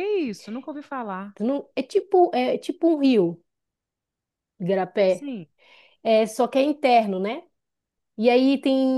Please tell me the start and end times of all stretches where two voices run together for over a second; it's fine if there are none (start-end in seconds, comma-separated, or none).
none